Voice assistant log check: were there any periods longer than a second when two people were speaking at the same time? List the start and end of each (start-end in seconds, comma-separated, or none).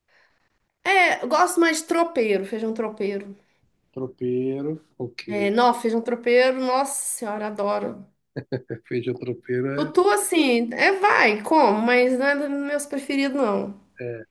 none